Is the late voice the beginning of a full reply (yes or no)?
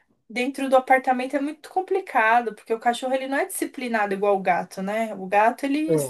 no